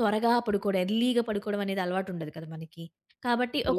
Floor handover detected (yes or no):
no